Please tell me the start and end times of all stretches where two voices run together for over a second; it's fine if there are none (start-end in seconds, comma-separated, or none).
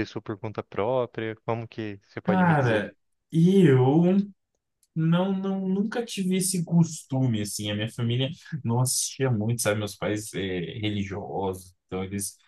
none